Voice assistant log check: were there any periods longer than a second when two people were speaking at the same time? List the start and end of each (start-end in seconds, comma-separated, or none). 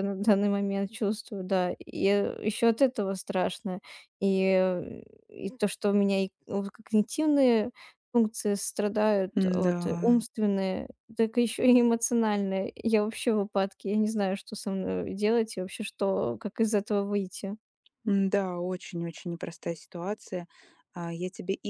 none